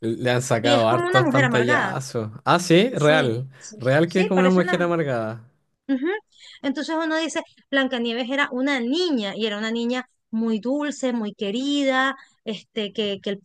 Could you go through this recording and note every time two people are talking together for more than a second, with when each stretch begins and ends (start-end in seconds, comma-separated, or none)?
0.6-1.9, 2.9-4.8